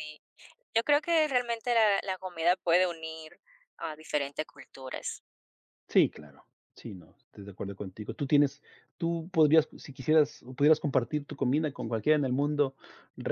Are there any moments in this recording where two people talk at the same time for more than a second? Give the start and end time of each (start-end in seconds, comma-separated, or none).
none